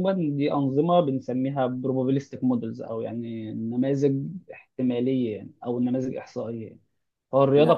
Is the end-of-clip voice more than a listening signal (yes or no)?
no